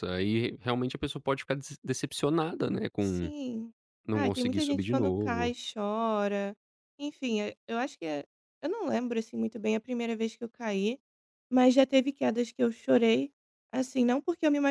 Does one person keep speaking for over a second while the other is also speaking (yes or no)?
yes